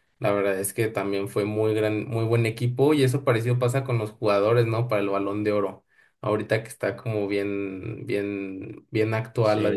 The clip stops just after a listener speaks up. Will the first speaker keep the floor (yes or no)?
yes